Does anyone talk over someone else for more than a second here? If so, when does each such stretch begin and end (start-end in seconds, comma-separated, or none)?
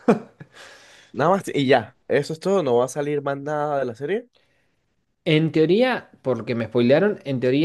none